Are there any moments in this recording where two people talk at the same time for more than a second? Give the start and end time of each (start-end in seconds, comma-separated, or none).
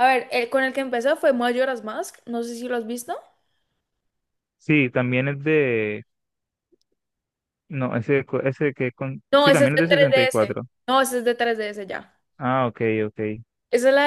9.3-10.6